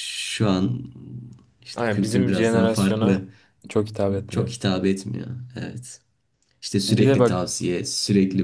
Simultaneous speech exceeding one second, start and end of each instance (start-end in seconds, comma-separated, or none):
1.8-3.2